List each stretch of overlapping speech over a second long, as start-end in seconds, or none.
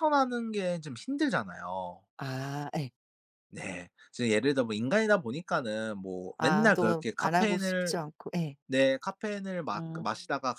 6.4-8.0